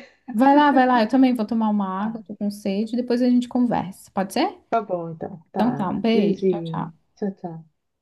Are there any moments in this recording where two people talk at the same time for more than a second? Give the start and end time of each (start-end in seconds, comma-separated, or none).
5.5-6.9